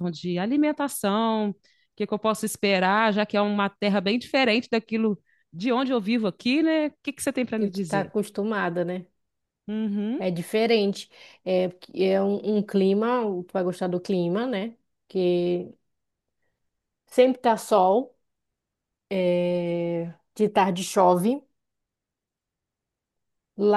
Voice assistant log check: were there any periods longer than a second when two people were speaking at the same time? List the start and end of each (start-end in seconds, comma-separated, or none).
none